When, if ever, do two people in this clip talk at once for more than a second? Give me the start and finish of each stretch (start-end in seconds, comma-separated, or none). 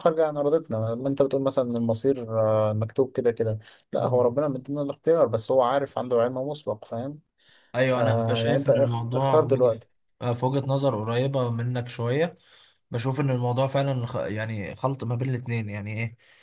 7.9-9.8